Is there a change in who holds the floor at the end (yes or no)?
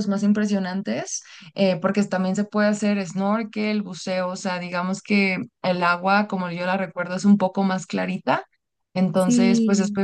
no